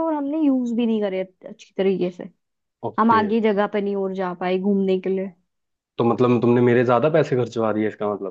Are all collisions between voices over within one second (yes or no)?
yes